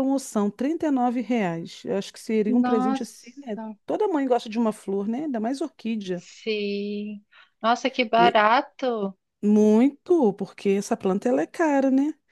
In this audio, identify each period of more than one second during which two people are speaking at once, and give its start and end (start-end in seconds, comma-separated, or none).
2.5-3.8